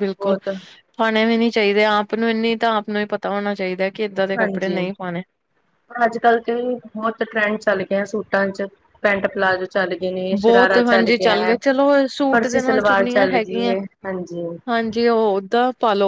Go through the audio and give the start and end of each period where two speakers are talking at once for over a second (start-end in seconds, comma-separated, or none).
12.3-13.8